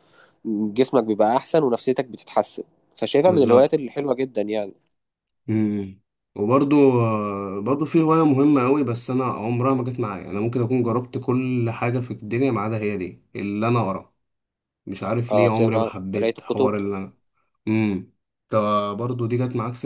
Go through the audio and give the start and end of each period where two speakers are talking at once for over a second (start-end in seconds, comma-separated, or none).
15.3-16.7